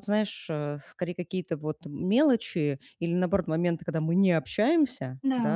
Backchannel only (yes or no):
yes